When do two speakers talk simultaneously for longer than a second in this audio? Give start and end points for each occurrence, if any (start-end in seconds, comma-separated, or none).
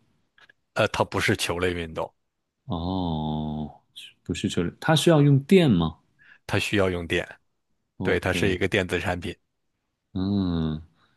none